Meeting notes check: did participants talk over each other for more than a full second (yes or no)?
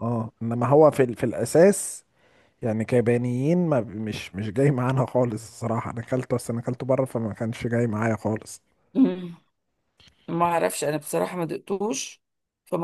no